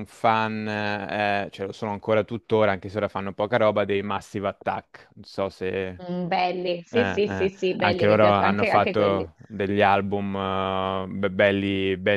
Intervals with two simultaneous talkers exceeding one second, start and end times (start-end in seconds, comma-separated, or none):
6.9-9.3